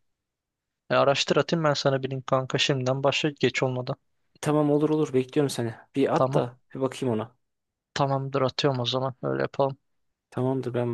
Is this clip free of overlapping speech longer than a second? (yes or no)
yes